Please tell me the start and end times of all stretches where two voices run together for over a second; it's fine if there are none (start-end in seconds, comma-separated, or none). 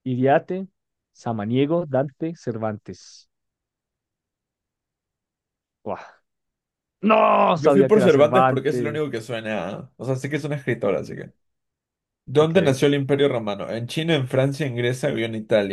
7.5-9.0